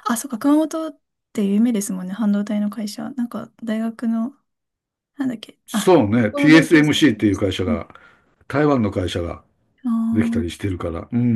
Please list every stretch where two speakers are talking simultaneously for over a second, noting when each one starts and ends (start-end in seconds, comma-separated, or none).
5.7-7.8